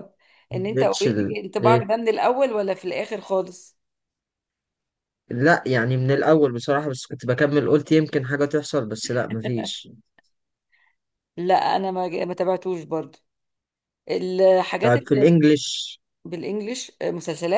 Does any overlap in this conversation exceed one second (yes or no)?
yes